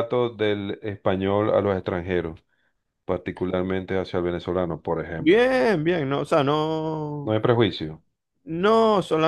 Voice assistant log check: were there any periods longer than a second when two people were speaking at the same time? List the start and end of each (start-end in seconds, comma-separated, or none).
none